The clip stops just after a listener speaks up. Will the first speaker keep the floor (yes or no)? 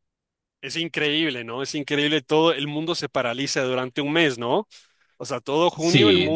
no